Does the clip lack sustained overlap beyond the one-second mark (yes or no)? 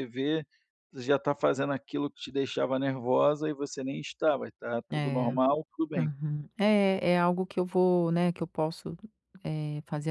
yes